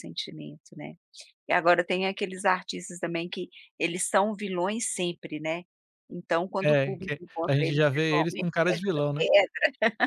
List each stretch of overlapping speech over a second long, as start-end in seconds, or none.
6.6-9.0